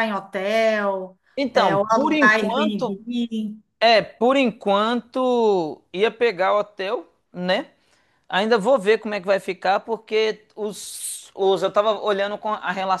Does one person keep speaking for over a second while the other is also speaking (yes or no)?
yes